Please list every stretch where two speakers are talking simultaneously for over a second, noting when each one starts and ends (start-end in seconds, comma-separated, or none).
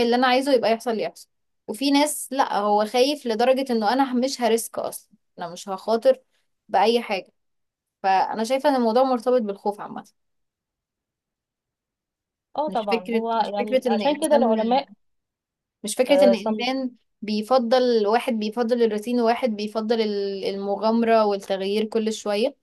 12.7-14.6